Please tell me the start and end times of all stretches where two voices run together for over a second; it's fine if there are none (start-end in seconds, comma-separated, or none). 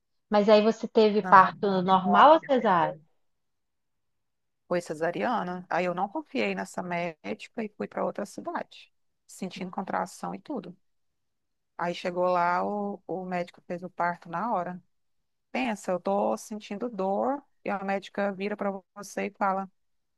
1.2-3.0